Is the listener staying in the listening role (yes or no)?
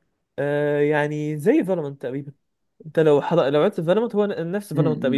no